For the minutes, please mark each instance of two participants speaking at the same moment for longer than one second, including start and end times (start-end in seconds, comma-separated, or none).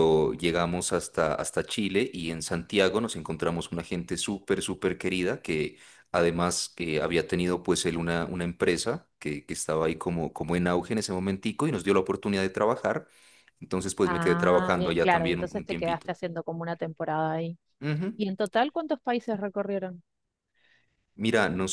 14.0-16.1